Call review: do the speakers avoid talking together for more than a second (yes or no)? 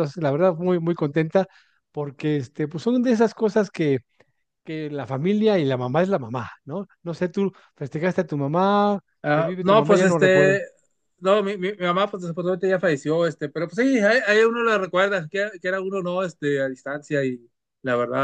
no